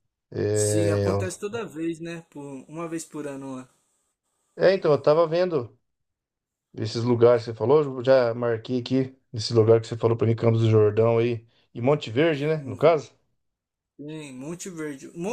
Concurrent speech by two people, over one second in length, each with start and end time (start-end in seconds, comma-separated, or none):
none